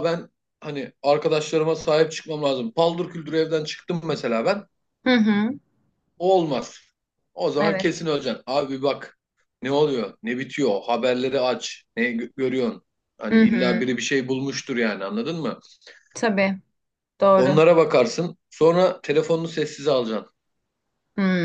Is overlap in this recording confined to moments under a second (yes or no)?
yes